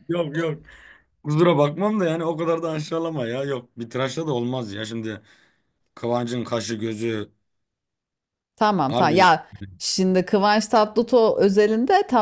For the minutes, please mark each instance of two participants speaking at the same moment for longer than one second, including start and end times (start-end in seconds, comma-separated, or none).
none